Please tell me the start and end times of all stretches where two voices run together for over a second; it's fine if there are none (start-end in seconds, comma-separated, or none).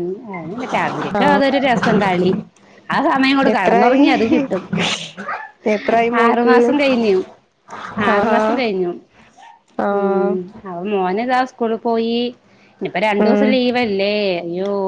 none